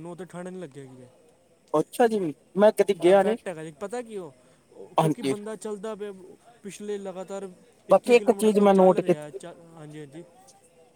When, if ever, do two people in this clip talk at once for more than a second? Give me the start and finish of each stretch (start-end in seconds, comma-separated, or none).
7.9-9.4